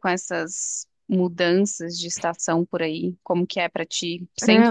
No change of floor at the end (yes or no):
no